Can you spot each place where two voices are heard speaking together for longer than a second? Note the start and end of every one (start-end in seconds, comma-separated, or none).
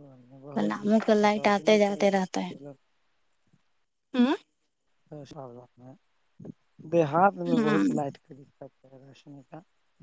0.5-2.1